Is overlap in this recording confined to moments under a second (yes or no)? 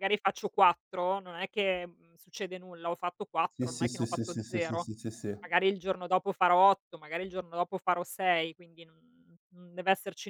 no